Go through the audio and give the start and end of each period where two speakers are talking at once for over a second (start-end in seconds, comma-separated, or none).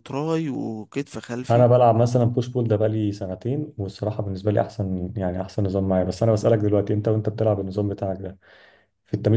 none